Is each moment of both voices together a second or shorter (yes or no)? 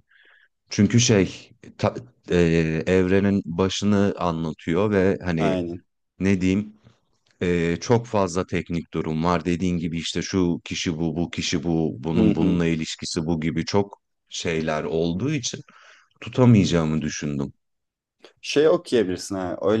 yes